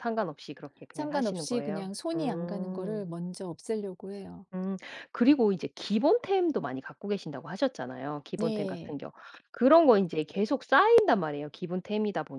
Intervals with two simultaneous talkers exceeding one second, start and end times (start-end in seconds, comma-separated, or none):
0.9-3.1